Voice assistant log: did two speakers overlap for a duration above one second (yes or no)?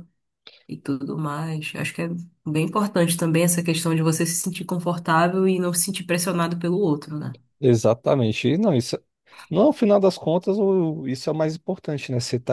no